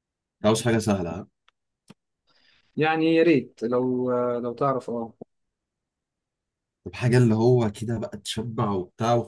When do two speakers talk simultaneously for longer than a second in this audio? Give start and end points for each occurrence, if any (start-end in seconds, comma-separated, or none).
none